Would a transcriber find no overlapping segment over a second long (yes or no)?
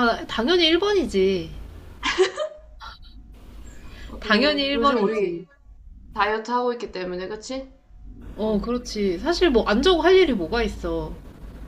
no